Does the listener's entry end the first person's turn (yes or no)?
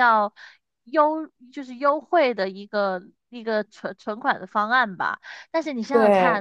no